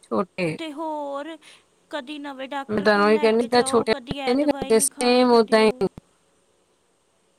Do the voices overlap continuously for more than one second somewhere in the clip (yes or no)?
yes